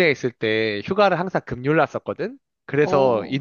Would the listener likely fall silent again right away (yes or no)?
yes